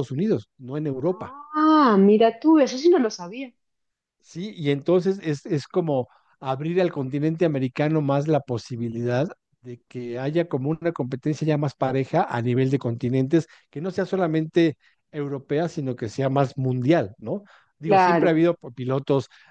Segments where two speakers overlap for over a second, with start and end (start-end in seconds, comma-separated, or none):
none